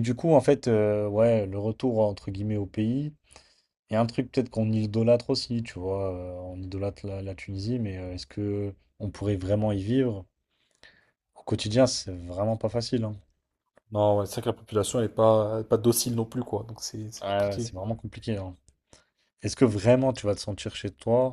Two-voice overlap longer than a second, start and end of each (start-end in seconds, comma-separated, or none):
none